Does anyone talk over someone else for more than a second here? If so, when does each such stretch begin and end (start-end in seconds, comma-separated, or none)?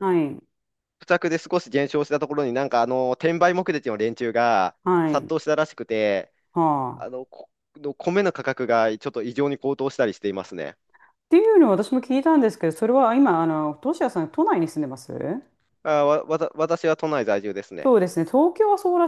none